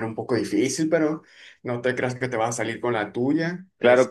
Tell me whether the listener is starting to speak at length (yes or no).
yes